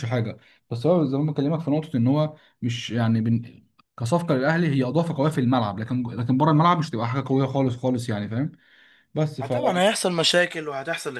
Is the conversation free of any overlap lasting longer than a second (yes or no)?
yes